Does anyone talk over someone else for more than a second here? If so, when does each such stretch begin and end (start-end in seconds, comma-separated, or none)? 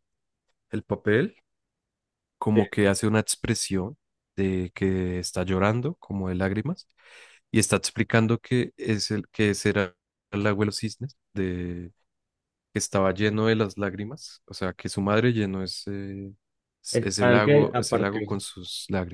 17.0-18.4